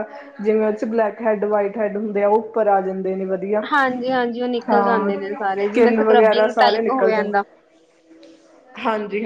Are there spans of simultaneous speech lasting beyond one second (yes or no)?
yes